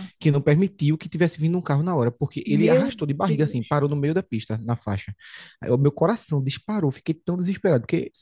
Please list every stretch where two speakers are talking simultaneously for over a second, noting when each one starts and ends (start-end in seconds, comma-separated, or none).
2.4-3.8